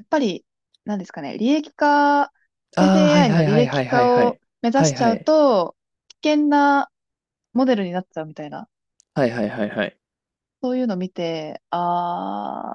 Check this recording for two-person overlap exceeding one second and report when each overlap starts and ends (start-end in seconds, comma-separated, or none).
2.8-5.3